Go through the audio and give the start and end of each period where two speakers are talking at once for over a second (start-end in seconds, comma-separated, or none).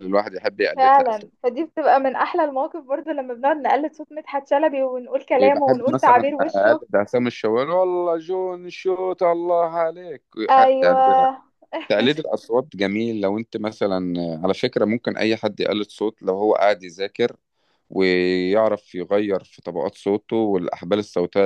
5.4-6.8